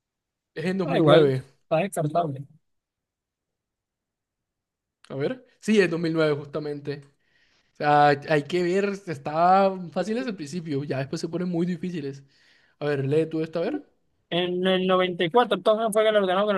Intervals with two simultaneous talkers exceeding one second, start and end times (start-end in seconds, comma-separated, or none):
none